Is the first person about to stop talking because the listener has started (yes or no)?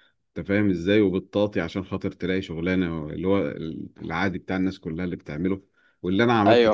no